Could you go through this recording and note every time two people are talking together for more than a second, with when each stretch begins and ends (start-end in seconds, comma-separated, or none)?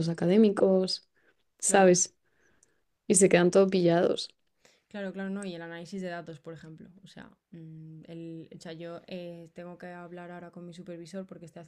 none